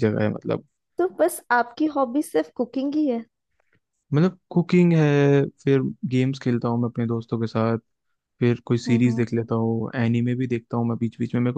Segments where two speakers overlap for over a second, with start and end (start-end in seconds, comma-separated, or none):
none